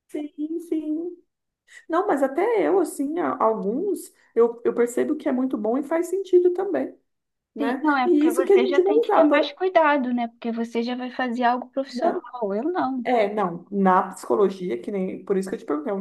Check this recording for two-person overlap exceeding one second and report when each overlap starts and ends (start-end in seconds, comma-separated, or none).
7.6-9.4